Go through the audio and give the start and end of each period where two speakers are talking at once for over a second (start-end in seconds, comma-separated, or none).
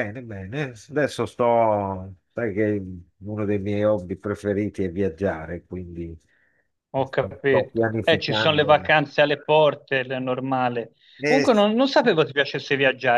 7.0-8.9